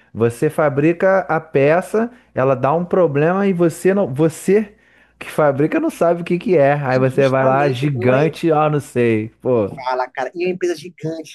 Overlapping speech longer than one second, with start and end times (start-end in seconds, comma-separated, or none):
7.0-8.2